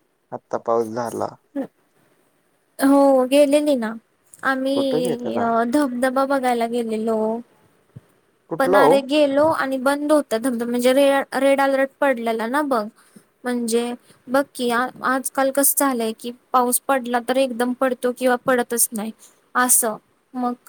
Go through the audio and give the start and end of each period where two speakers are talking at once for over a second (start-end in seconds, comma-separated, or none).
none